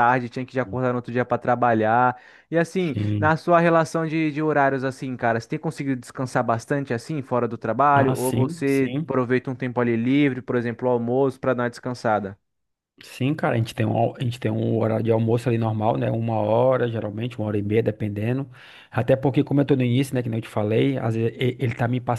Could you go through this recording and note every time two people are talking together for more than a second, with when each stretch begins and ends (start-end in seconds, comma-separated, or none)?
7.9-9.1